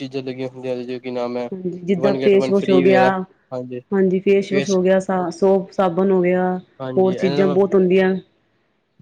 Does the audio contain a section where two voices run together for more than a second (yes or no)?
no